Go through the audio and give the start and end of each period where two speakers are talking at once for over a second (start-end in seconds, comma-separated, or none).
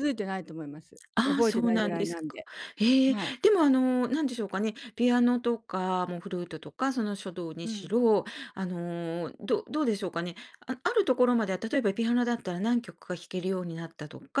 1.2-2.4